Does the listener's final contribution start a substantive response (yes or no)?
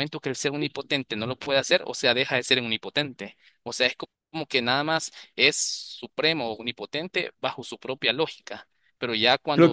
no